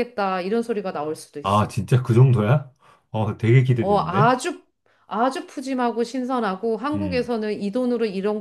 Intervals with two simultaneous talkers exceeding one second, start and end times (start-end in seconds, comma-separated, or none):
none